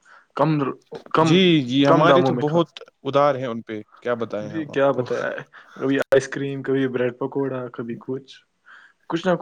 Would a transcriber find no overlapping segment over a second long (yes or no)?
yes